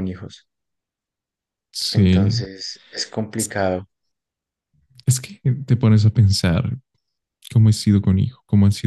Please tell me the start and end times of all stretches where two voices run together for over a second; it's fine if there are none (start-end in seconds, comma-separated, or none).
none